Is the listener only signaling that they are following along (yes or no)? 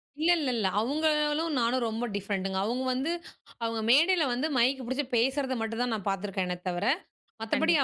yes